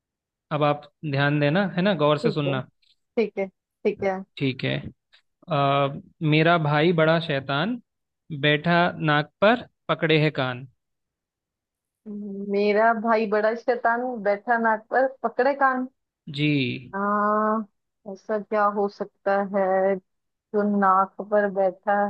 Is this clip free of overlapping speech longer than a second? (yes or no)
yes